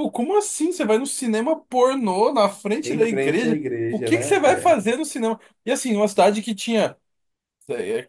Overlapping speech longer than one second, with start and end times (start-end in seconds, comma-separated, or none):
2.8-4.8